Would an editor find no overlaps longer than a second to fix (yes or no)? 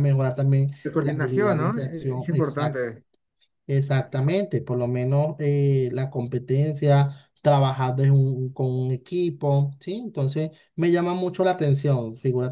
no